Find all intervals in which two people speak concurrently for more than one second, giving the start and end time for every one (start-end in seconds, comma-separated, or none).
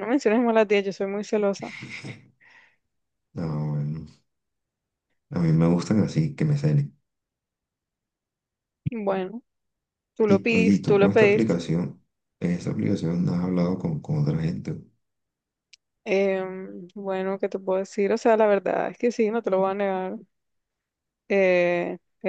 10.3-11.6